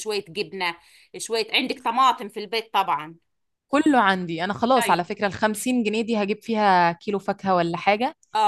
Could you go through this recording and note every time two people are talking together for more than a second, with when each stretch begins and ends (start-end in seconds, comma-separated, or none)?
none